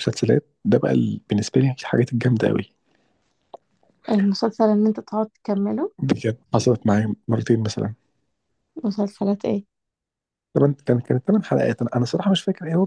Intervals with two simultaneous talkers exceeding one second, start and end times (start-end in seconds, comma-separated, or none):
none